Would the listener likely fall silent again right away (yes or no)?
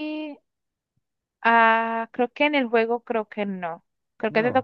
yes